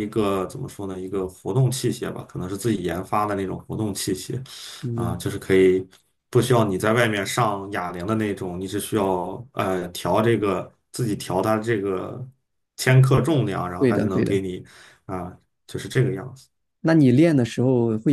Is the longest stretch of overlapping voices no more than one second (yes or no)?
yes